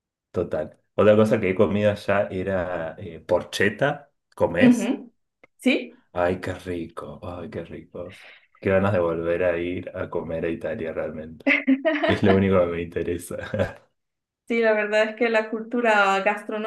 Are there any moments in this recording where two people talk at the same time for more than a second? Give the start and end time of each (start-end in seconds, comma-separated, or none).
none